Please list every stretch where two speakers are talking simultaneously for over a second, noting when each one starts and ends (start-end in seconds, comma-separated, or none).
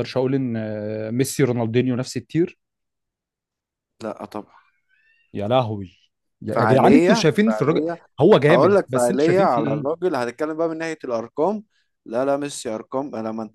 6.5-7.8, 8.5-9.9